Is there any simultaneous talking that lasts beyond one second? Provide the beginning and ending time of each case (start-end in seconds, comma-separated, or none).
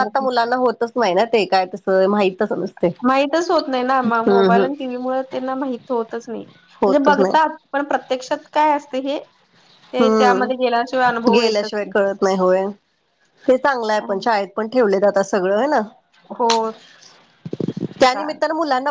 10.0-11.7